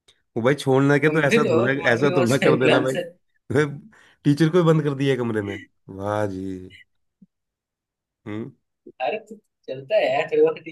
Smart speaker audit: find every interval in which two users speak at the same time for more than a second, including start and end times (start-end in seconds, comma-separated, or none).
1.0-3.0